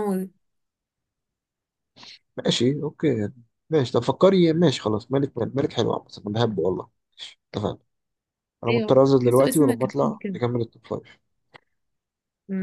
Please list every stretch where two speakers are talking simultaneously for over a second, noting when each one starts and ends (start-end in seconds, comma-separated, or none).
8.7-10.4